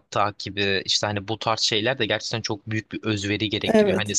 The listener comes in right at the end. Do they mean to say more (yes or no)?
no